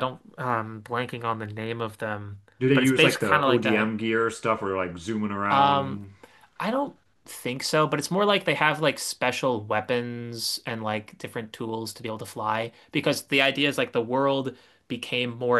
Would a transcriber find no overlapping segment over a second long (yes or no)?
no